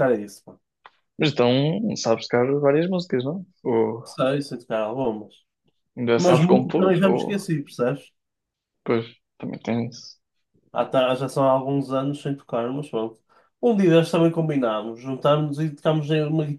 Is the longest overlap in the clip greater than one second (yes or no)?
yes